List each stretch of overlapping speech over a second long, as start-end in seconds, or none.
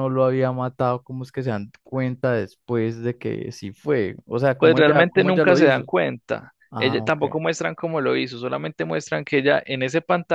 4.6-5.9